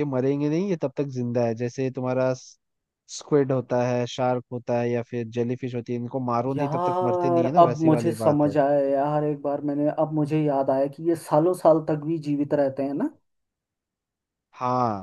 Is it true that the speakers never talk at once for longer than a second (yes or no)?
no